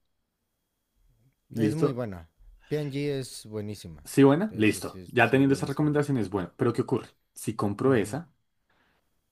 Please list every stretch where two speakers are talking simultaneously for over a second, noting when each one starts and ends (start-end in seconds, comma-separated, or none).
4.5-6.0